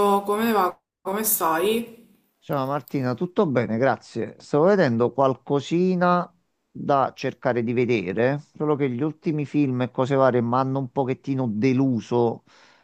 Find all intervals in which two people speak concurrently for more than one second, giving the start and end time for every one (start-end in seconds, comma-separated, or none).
none